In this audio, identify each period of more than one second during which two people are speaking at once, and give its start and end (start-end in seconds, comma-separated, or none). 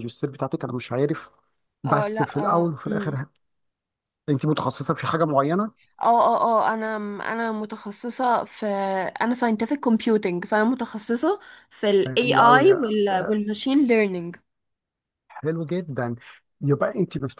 1.9-3.2